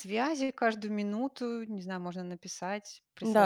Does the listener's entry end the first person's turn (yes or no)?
yes